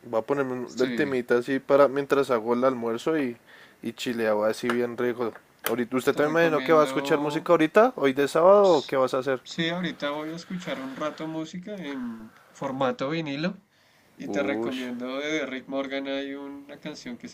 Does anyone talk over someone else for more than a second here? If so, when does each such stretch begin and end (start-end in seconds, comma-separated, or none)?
6.1-7.5